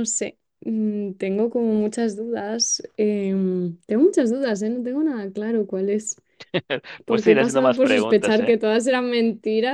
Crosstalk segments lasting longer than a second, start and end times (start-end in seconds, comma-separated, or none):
7.1-8.6